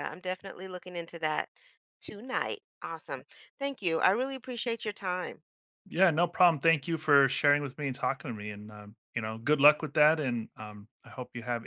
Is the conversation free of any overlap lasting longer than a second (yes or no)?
yes